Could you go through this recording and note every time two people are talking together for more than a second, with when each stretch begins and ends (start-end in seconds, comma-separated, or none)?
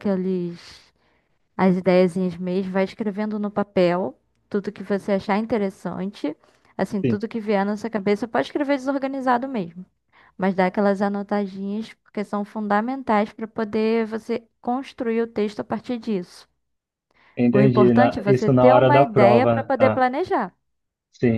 17.5-20.0